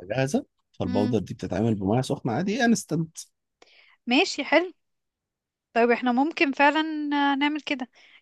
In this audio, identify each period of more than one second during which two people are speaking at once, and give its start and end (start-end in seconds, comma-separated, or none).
none